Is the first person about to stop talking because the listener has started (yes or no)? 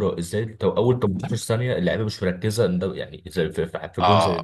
yes